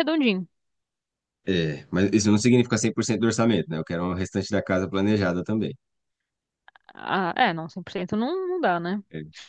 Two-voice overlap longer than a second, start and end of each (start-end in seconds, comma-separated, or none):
none